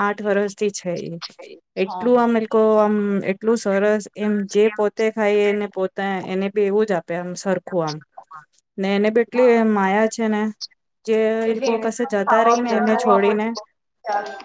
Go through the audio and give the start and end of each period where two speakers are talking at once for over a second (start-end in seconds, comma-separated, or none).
11.5-13.5